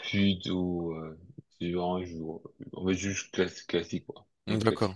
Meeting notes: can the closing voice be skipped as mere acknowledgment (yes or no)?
no